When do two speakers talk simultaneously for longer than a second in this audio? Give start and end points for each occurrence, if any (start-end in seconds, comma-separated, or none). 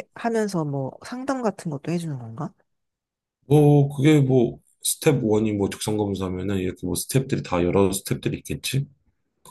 none